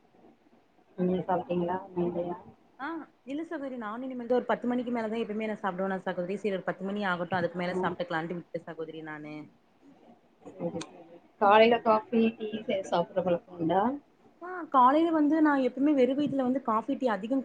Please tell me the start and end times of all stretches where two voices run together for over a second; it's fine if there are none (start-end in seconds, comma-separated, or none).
none